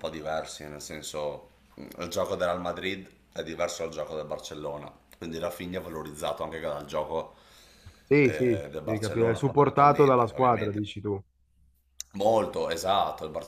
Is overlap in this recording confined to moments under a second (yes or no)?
no